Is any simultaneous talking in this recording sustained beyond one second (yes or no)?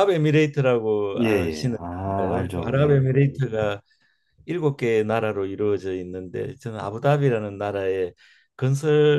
yes